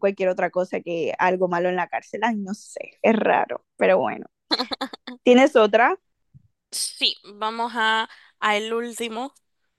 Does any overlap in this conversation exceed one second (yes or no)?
no